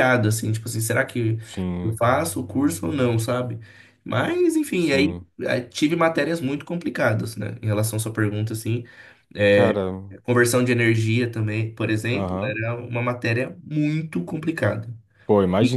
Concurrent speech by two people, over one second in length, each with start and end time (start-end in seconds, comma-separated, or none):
none